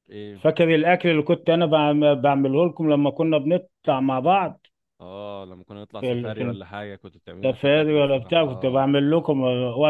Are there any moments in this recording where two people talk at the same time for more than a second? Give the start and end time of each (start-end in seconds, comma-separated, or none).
7.4-8.9